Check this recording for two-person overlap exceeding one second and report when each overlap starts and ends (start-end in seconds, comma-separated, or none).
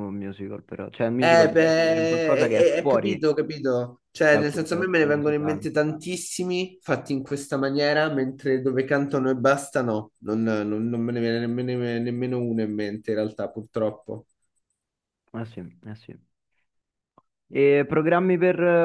1.2-3.2, 4.3-5.6